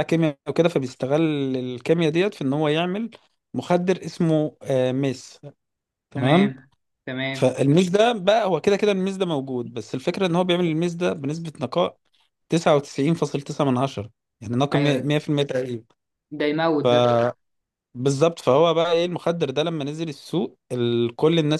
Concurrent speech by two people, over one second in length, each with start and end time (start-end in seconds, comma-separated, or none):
none